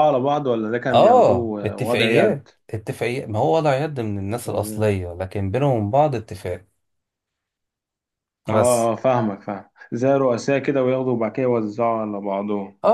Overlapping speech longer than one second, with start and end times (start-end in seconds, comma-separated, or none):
0.9-2.5